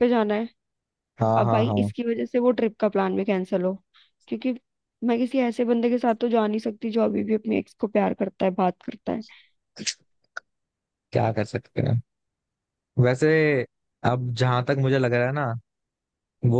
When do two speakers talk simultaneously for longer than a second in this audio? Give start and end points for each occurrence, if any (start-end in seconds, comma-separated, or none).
none